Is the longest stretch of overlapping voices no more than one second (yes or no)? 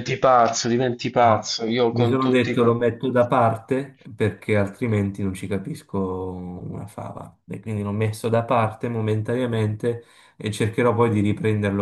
no